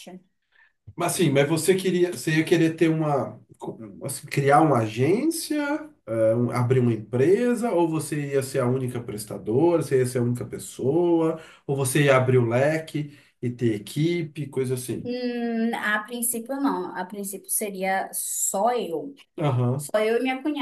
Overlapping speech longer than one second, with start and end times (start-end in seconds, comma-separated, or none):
none